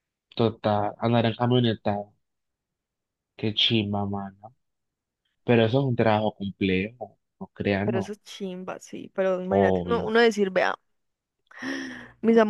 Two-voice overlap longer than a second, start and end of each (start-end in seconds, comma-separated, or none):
none